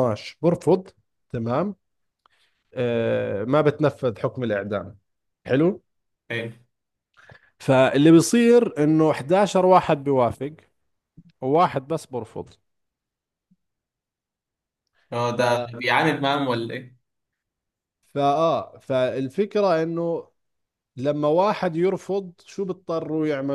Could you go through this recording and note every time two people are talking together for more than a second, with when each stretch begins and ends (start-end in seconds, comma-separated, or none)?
none